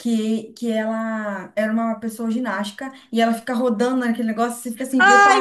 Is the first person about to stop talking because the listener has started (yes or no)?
yes